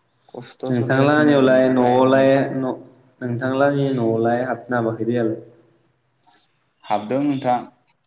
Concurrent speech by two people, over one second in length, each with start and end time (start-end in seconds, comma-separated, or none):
0.7-2.2